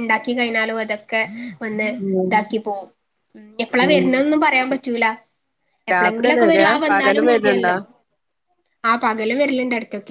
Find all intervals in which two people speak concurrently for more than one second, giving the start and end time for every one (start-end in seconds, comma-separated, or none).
5.9-7.7